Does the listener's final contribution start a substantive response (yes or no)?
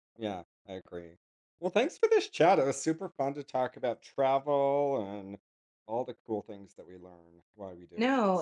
yes